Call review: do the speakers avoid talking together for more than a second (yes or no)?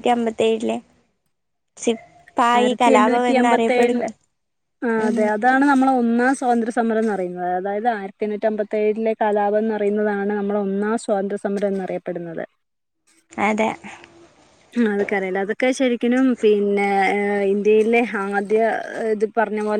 no